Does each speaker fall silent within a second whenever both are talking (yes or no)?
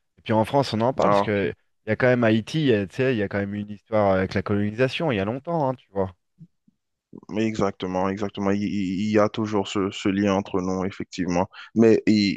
yes